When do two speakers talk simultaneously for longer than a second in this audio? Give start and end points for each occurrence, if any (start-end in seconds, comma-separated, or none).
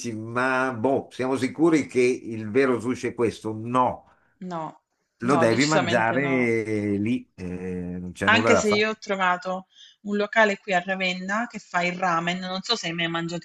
5.2-6.5